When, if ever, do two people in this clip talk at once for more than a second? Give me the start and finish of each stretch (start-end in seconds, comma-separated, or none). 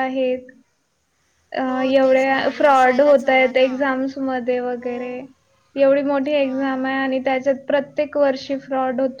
1.6-3.7